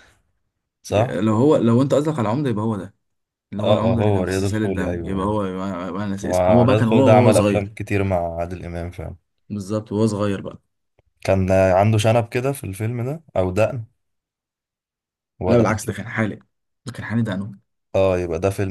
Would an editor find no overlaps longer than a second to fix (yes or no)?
no